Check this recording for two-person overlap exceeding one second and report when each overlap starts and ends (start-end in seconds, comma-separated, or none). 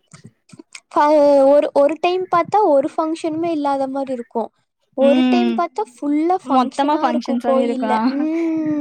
6.6-7.9